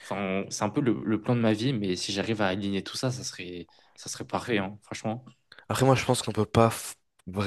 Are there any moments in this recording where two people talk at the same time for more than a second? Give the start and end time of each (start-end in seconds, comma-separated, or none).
none